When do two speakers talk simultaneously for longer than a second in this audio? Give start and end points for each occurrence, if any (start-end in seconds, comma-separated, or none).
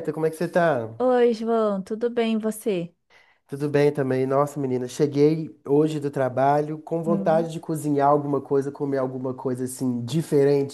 none